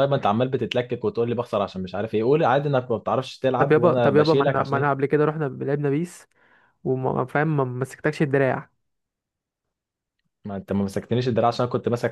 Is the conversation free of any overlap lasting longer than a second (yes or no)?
no